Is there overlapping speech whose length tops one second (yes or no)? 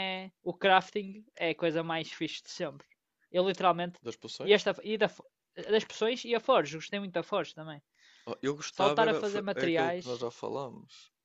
yes